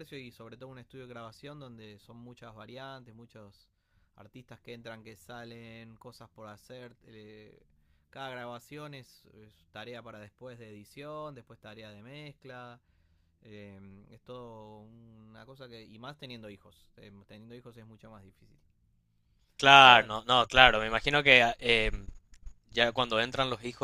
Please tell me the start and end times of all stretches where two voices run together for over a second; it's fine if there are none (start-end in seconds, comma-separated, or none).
none